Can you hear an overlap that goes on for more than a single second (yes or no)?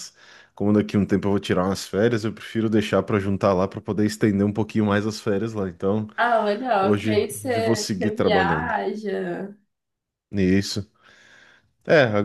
yes